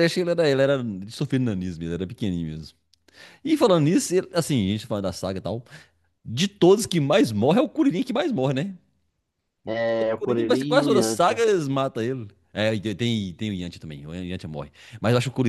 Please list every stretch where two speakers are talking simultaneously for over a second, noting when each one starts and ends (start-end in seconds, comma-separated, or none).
9.9-11.4